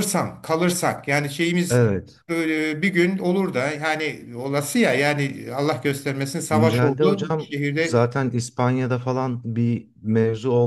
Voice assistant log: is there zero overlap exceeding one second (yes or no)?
no